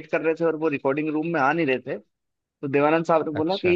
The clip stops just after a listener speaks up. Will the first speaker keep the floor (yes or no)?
yes